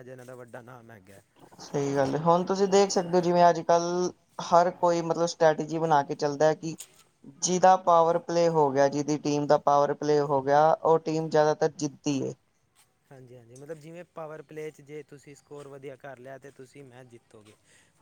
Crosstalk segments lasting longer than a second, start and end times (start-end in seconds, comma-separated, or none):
none